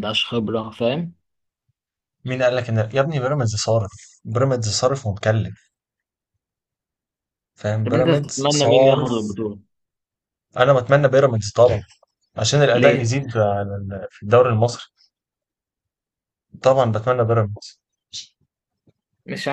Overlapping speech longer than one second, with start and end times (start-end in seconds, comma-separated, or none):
7.8-9.1